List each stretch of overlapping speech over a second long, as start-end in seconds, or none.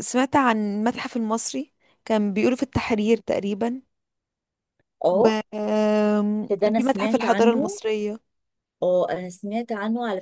6.5-7.8